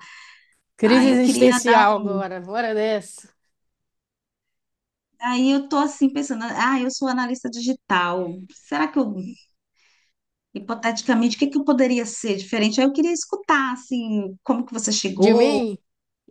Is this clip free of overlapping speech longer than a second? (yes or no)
no